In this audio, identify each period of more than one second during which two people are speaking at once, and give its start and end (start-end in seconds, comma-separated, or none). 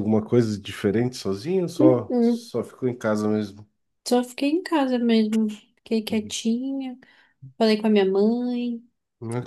none